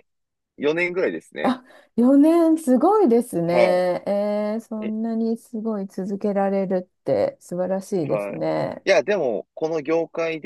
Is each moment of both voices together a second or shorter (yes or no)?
yes